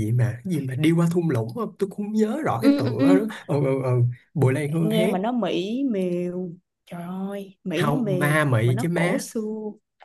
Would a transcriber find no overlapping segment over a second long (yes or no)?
no